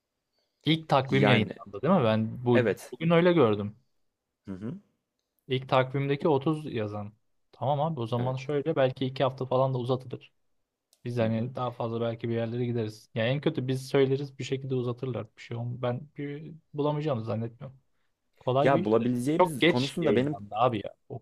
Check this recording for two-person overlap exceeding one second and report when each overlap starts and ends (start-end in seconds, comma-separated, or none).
18.6-20.4